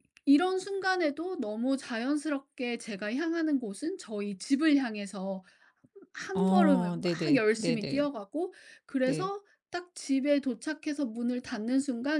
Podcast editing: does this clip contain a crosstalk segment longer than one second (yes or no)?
yes